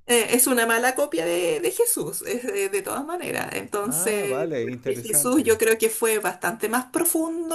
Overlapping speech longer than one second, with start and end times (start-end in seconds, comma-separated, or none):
3.8-5.6